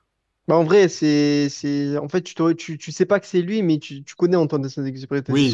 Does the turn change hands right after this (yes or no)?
yes